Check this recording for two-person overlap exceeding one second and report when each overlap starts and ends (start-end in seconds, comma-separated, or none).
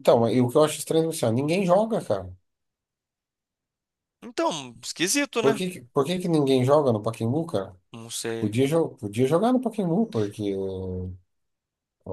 none